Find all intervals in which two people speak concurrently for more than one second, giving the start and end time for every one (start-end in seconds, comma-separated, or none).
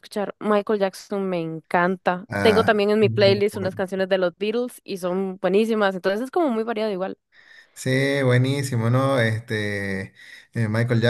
2.3-3.8